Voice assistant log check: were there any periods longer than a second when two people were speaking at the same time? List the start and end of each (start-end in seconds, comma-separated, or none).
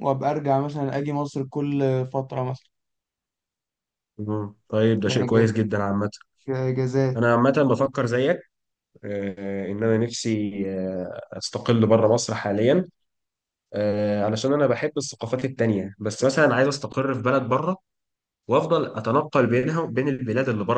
none